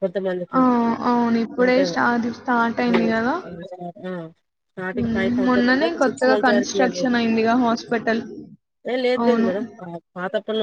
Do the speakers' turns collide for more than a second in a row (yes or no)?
yes